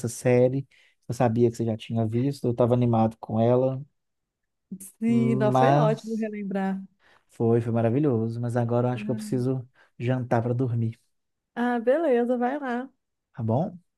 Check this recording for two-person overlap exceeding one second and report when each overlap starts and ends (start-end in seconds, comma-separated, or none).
5.1-6.3